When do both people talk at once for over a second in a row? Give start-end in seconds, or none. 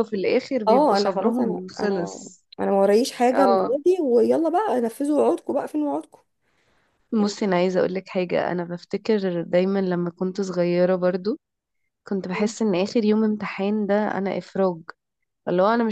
0.7-2.5